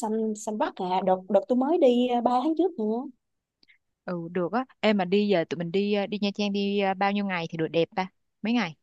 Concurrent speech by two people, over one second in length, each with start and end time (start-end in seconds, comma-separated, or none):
none